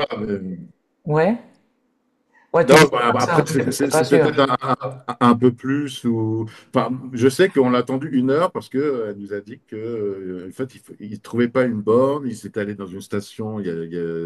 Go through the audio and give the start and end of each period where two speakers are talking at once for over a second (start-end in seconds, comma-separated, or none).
2.6-4.3